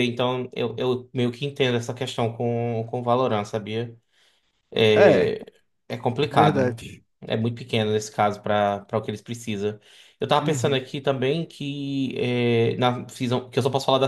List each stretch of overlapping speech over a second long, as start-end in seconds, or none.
none